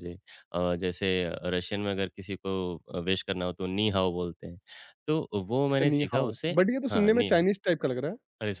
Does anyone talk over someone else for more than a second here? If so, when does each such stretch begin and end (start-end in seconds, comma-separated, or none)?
5.7-7.4